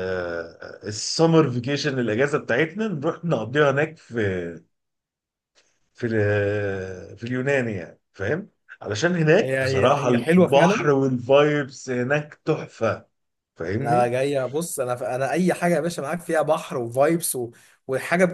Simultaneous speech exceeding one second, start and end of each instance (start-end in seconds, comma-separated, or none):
9.4-10.9